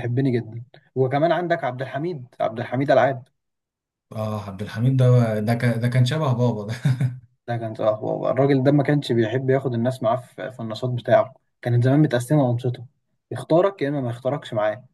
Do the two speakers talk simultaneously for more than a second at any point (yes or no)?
no